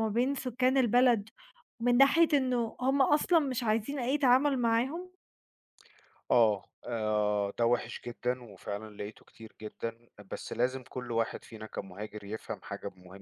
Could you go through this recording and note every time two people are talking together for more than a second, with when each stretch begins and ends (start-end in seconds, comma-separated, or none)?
none